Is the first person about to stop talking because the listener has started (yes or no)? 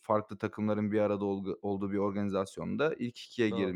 no